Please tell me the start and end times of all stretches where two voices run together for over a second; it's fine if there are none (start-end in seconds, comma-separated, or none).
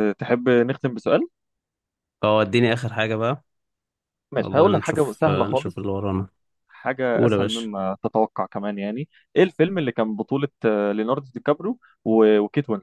4.4-5.9